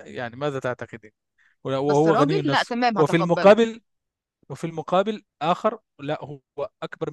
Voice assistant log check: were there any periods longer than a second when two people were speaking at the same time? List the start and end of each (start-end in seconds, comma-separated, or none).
1.9-3.5